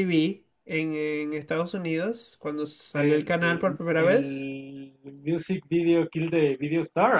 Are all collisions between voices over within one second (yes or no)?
no